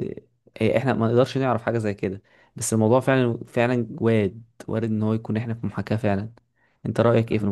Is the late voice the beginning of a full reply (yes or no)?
yes